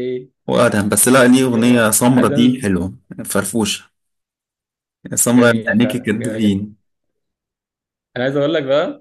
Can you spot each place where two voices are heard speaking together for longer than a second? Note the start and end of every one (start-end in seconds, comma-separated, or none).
1.4-2.7, 5.3-6.6